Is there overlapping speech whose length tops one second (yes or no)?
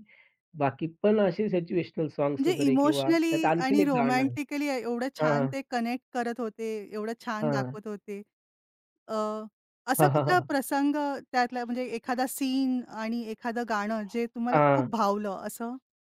yes